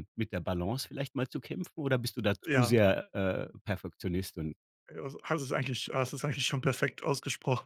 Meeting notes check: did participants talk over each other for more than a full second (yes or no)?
no